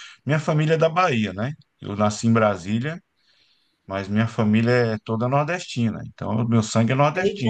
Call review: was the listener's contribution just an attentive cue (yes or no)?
no